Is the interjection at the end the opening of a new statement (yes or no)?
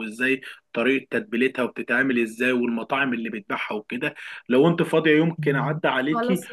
no